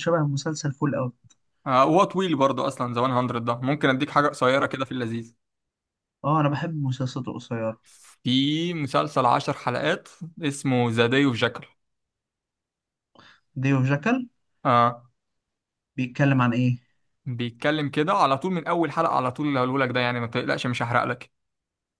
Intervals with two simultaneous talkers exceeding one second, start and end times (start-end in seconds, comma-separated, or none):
none